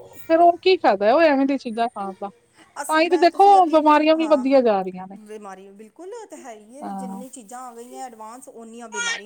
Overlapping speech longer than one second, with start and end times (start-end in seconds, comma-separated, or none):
2.9-4.4